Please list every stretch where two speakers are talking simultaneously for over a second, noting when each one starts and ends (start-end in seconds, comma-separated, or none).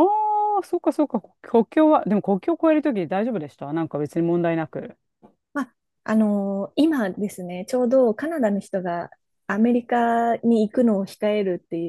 none